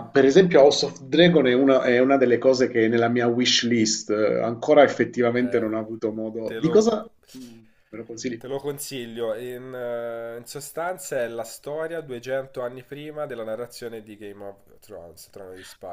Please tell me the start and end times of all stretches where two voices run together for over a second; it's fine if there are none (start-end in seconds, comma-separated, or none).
none